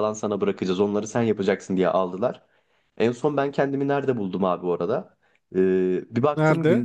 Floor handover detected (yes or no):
no